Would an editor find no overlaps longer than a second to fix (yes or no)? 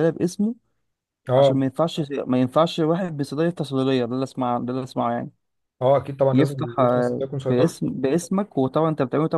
no